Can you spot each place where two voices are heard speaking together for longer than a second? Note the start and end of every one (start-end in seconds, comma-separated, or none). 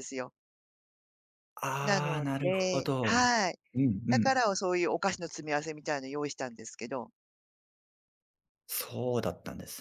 1.8-3.2